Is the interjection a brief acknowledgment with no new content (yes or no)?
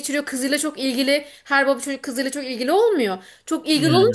yes